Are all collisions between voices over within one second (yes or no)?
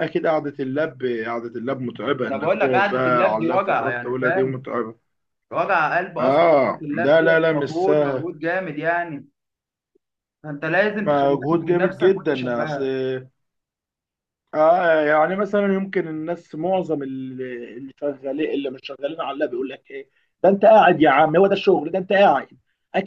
no